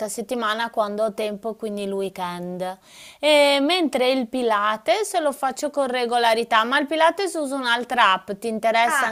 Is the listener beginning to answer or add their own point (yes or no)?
yes